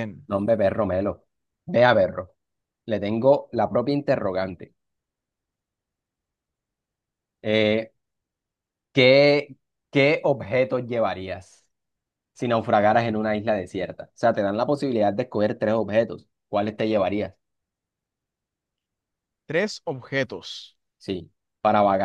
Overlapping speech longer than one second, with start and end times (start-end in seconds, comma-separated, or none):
none